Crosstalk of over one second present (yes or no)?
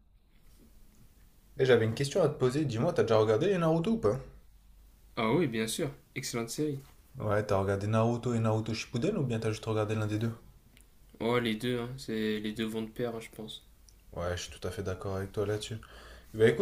no